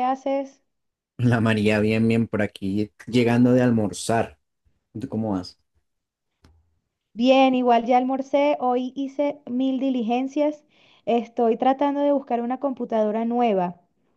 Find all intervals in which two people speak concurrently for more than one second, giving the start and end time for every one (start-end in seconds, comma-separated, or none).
none